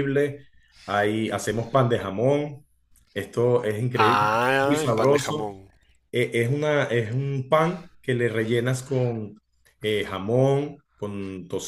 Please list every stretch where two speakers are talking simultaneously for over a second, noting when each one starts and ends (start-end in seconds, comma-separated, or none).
4.0-5.5